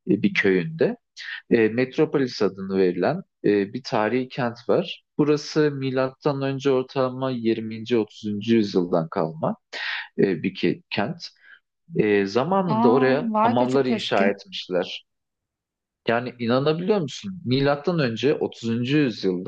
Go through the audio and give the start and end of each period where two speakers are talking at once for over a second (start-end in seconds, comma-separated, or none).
12.7-14.2